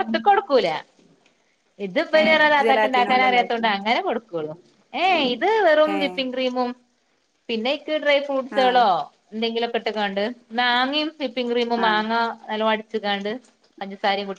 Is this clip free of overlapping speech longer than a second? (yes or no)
no